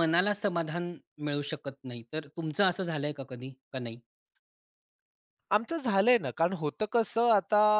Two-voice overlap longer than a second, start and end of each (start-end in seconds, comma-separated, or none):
none